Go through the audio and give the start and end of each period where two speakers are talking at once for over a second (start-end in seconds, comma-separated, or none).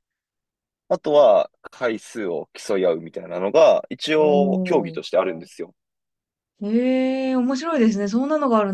none